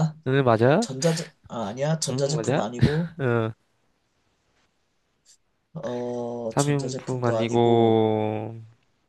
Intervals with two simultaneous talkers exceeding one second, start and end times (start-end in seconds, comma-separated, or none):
6.5-8.0